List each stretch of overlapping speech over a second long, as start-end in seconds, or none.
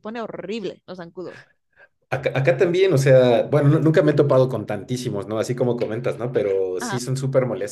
none